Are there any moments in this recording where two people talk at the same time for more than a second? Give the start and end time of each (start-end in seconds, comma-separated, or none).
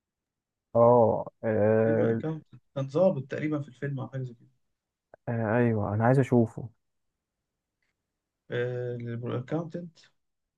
none